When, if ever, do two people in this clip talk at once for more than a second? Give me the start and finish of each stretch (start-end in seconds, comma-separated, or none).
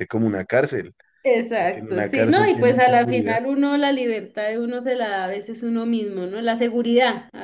1.5-3.4